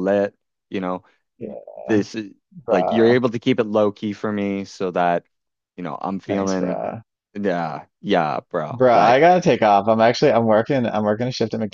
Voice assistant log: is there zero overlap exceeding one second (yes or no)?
yes